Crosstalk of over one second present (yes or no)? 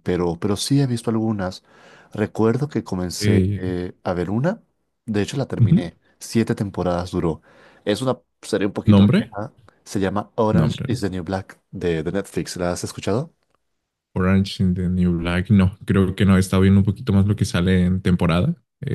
no